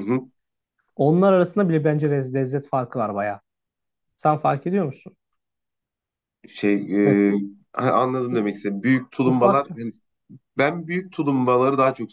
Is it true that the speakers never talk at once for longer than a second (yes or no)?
yes